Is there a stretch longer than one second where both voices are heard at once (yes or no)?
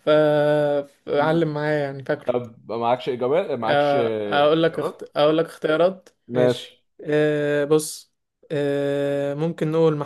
yes